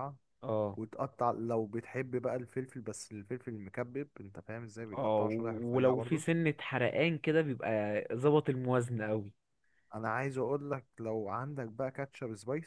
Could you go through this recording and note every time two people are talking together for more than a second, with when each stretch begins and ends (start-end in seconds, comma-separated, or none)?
4.9-6.2